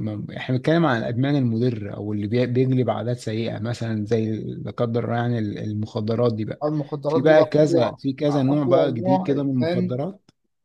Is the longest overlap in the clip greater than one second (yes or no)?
yes